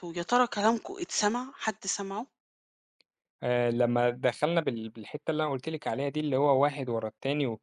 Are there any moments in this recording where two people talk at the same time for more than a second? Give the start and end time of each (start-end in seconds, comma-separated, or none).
none